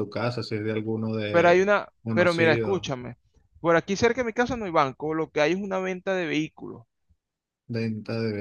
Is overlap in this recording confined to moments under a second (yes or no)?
no